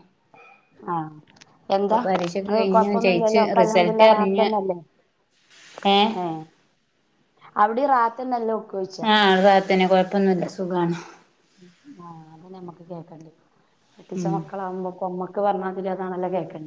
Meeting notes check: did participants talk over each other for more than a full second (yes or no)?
yes